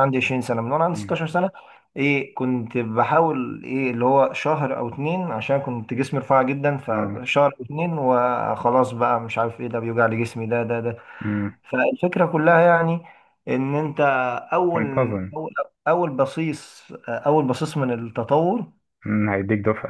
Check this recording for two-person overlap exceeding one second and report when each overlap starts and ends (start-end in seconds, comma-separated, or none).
none